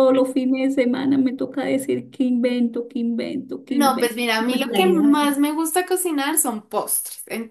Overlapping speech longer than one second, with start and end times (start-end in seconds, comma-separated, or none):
3.7-5.3